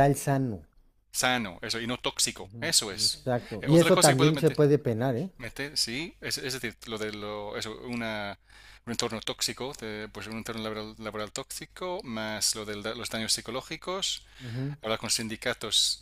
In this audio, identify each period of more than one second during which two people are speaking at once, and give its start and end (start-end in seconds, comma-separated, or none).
2.4-4.6